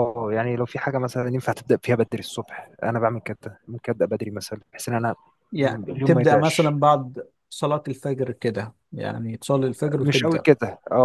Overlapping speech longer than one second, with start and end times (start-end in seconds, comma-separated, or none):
5.6-6.8